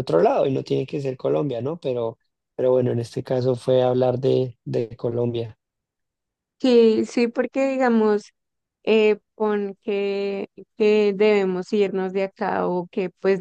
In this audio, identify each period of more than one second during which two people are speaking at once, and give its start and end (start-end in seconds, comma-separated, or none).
none